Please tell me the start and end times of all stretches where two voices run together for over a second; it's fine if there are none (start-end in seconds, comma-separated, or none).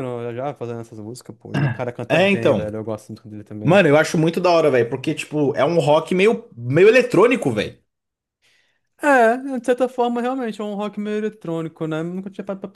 none